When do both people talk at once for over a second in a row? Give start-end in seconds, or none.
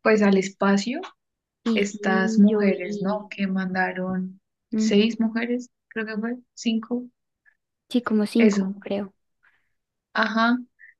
1.8-3.3